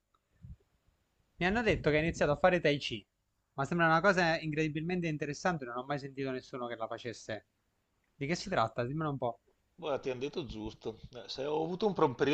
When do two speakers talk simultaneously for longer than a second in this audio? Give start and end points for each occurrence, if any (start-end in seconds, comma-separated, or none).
none